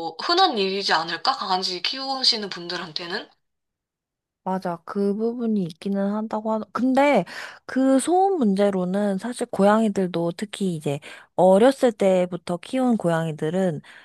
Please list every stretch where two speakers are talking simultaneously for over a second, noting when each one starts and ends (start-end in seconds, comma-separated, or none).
none